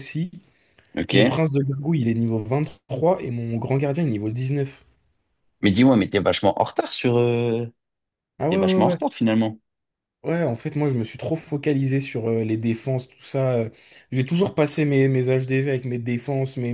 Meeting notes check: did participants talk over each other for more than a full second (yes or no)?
no